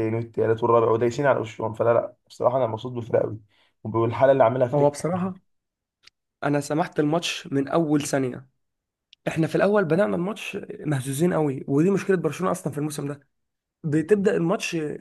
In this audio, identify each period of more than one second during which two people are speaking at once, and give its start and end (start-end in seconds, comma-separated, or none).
none